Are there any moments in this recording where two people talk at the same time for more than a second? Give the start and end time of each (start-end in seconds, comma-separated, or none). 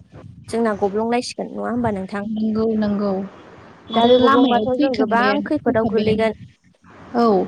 4.0-6.3